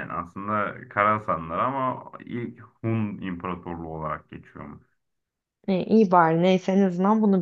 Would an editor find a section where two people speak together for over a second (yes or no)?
no